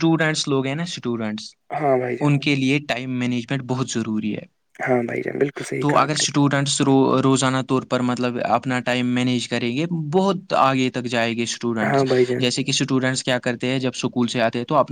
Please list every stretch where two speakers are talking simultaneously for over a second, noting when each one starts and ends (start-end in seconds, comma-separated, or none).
none